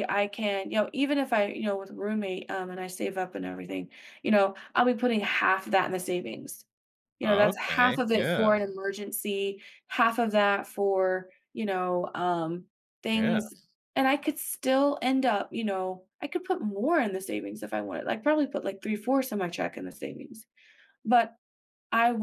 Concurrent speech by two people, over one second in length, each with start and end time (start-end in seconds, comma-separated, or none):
7.2-8.6